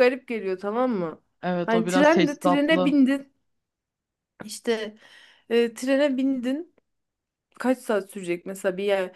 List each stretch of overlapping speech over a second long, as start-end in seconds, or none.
1.7-2.9